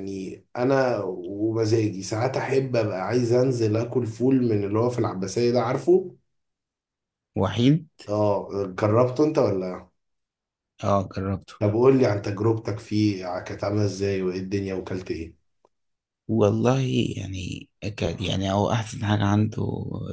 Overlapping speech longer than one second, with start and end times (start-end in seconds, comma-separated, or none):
none